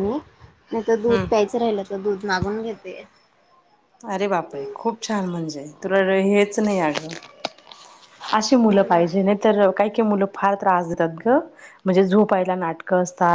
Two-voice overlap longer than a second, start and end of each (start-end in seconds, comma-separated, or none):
none